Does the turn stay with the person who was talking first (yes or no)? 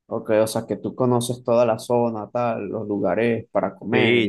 no